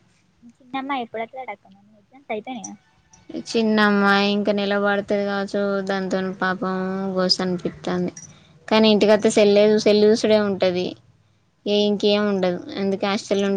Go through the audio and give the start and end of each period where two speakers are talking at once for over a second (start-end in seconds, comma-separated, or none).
none